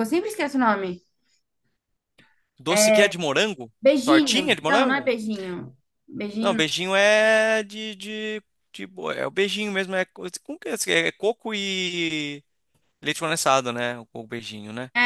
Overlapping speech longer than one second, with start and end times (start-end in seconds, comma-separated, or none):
3.8-5.1